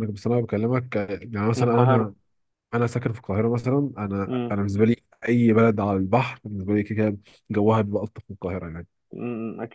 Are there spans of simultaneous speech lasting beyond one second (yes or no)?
no